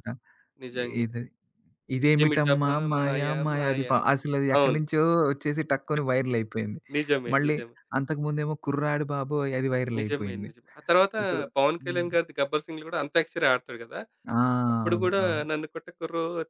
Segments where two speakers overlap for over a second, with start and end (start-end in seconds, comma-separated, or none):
2.1-3.8